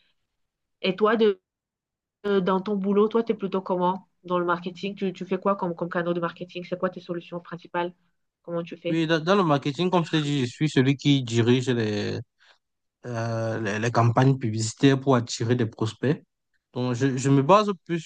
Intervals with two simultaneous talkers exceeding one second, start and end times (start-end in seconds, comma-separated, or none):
none